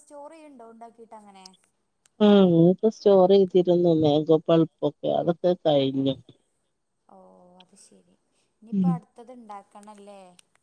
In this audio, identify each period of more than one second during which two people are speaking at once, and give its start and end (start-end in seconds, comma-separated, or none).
none